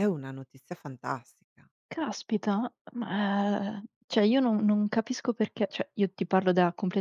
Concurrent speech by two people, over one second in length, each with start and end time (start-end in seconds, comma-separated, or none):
none